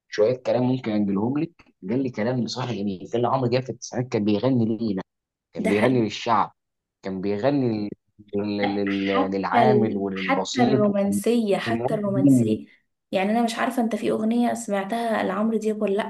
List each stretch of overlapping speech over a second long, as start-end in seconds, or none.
8.6-12.6